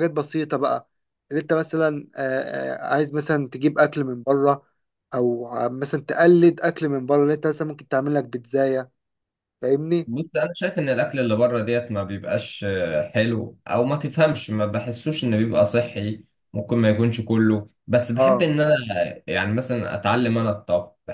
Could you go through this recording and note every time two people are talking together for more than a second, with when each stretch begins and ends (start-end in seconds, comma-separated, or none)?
none